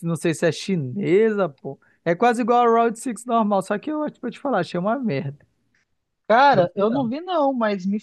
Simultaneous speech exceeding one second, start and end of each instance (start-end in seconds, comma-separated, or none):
none